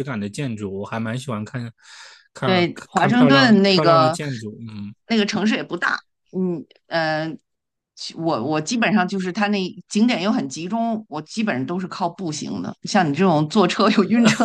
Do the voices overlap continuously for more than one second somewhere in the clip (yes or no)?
yes